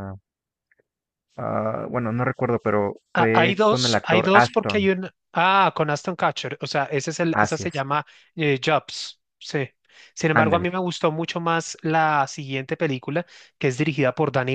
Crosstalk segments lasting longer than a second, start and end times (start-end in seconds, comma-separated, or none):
3.1-4.9